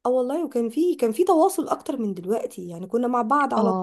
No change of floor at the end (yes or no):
yes